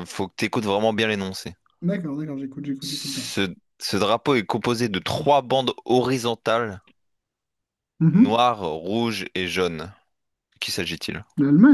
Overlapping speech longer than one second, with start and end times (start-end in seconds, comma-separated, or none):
none